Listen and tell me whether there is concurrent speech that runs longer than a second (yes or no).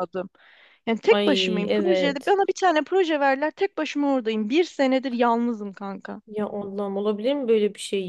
yes